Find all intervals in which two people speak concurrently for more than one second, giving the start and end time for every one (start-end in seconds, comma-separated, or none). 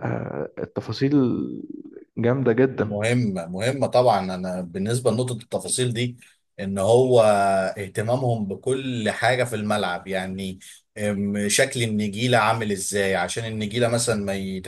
none